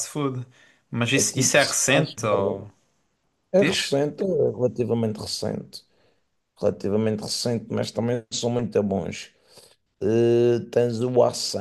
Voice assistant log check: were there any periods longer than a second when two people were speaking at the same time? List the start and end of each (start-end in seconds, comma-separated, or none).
1.1-2.6